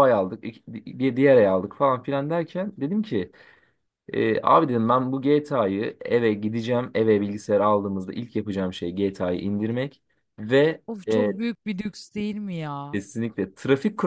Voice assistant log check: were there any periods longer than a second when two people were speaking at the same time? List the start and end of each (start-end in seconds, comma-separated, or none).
none